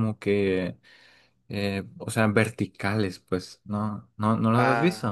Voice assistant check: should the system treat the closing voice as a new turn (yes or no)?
yes